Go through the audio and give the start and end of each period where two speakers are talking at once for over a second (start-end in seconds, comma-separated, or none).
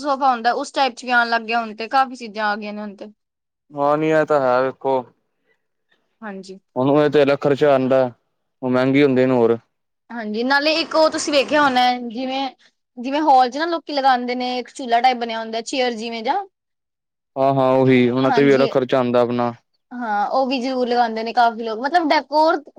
none